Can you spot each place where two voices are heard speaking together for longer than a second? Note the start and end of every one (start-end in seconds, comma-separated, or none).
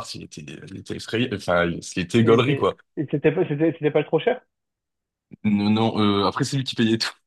none